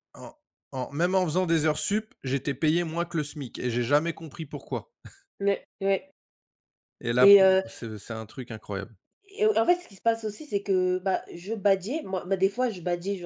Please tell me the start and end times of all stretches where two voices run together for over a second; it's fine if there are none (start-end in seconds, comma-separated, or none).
none